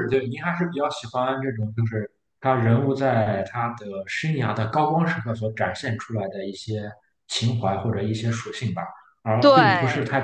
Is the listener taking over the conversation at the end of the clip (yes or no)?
no